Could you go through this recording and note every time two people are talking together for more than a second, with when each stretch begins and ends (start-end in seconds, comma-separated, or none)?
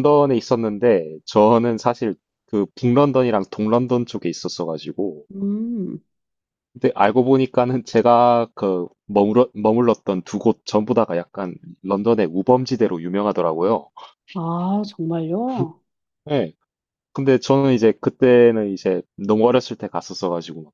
none